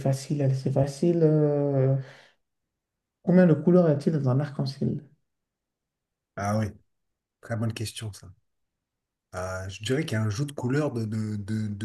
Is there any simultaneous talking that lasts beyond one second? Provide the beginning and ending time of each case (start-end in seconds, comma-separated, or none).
none